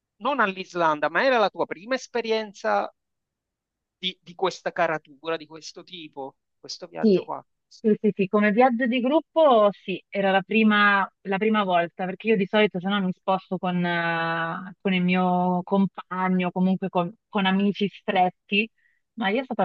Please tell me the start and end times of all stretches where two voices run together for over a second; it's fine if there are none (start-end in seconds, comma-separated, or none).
none